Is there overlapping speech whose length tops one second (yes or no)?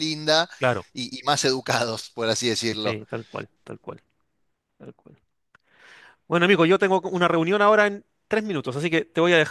no